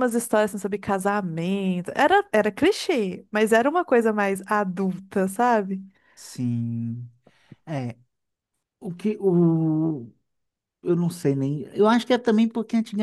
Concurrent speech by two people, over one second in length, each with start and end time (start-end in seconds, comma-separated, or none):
none